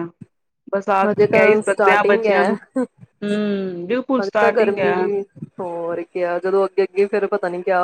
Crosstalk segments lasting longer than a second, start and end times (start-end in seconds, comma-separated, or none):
3.2-4.9